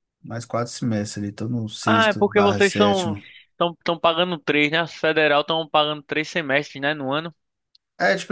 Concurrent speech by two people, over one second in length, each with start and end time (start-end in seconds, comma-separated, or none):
1.9-3.1